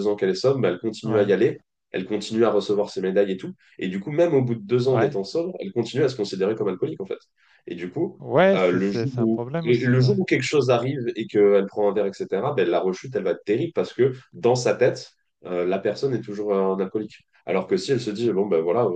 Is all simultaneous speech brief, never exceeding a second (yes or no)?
no